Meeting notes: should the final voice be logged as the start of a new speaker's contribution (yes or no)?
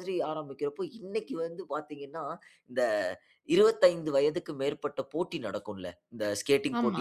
no